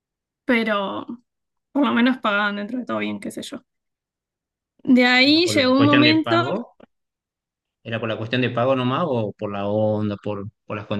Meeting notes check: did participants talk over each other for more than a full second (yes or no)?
yes